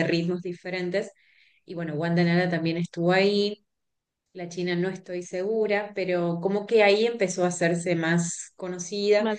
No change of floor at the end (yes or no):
yes